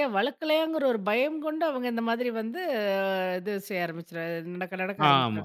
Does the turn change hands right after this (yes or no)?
yes